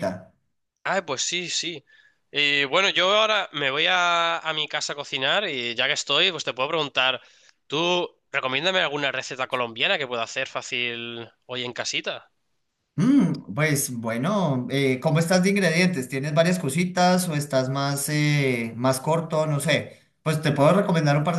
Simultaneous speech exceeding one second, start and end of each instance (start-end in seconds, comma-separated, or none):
none